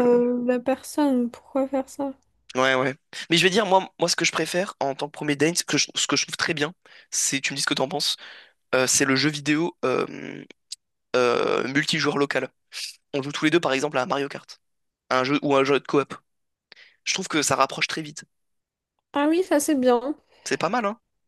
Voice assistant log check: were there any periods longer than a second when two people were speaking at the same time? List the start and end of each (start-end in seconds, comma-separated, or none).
none